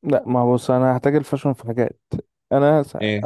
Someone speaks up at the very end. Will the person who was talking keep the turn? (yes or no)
yes